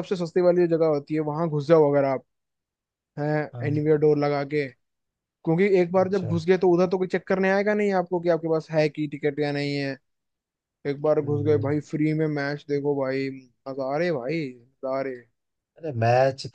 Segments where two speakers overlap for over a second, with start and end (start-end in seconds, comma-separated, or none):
none